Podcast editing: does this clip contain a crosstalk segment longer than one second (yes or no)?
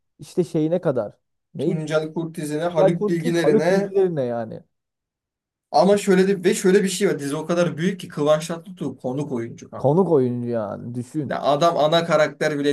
yes